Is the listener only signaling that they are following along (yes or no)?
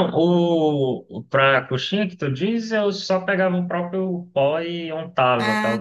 yes